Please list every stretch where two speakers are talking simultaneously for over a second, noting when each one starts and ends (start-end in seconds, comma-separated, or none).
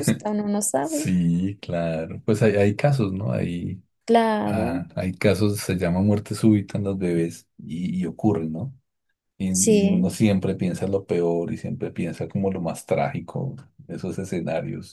none